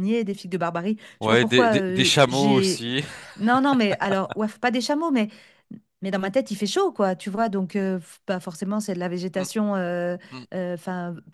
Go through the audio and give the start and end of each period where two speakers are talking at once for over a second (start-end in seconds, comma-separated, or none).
1.2-2.8